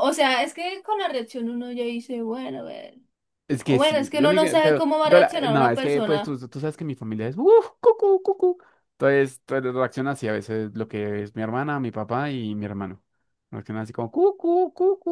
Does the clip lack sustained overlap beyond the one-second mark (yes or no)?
no